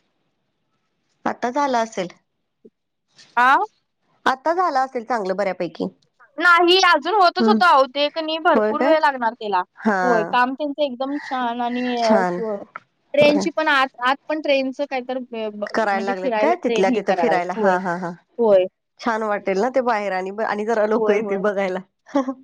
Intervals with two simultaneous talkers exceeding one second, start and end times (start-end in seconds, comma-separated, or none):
15.7-17.7